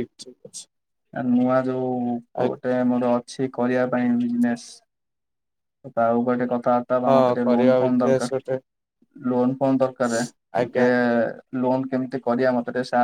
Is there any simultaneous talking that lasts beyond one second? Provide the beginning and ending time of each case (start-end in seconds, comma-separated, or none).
7.1-8.6